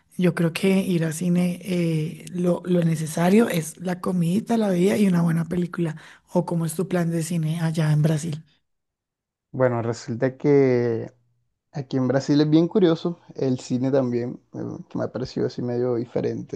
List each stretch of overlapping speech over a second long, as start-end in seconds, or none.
none